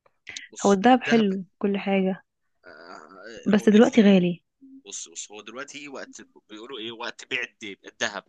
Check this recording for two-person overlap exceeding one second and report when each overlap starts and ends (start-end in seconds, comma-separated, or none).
none